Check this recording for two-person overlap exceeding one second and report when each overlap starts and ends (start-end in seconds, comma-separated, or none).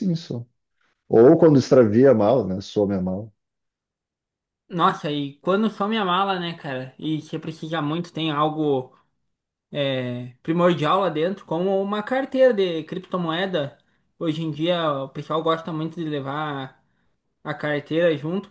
none